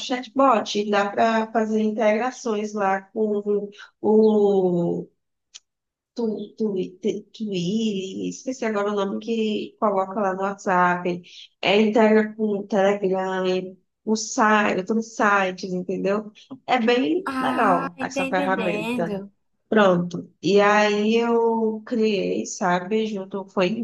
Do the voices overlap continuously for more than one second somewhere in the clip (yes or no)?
yes